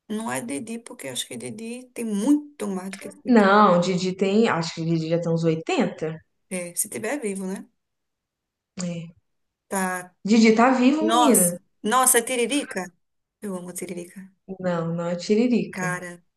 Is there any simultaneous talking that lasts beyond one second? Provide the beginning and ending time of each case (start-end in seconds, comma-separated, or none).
none